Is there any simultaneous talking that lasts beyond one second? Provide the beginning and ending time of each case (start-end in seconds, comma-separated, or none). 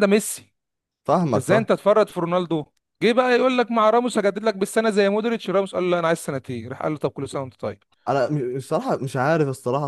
none